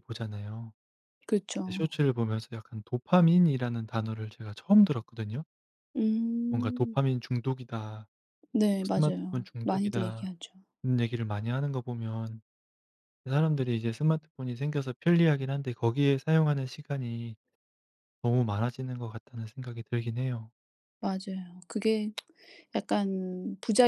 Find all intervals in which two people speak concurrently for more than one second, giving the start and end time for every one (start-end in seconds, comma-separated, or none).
8.8-10.3